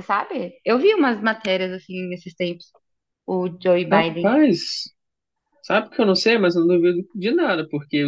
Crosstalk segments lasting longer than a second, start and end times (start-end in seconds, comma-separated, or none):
none